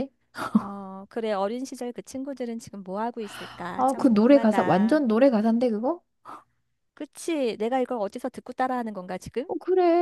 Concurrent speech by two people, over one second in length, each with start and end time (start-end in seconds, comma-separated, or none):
3.8-5.0